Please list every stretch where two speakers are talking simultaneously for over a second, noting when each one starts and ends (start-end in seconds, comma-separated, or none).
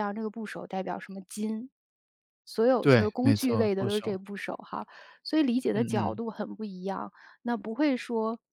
2.8-4.2